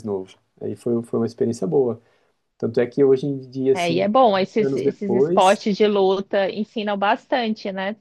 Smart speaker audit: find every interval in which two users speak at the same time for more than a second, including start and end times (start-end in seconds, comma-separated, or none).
3.7-5.6